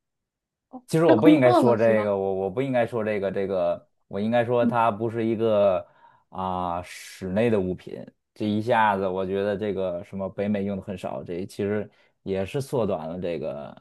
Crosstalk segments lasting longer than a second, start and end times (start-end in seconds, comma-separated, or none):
0.9-2.1